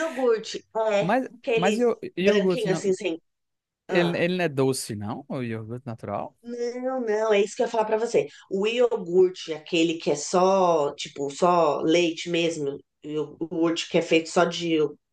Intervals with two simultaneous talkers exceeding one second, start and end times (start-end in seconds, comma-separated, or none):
1.0-2.8